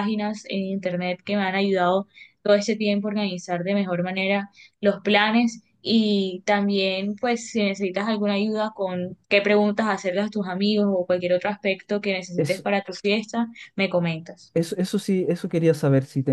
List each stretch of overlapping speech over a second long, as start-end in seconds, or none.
none